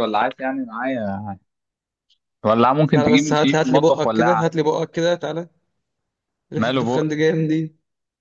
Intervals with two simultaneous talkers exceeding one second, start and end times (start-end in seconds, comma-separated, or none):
2.9-4.5